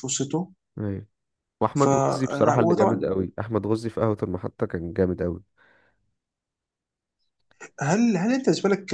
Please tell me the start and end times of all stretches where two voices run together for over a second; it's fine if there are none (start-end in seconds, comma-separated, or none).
1.7-3.0